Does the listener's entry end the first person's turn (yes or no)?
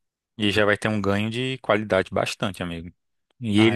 no